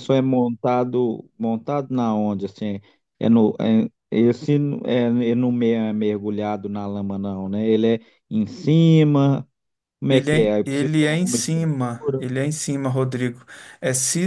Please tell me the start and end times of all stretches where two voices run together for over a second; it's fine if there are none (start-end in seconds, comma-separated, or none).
10.1-12.2